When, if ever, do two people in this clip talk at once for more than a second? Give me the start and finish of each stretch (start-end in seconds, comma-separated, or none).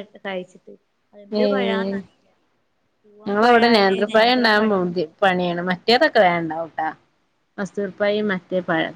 3.3-4.7